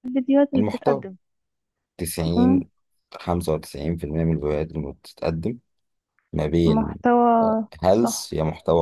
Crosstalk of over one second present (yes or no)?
no